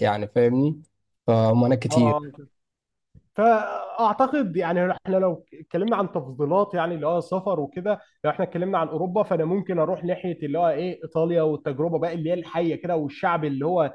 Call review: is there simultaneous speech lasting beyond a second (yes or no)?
no